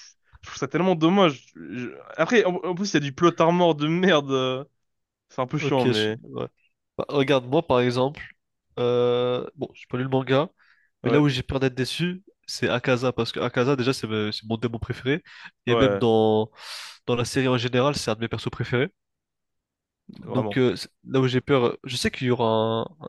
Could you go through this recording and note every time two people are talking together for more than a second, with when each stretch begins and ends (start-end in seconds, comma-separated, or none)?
none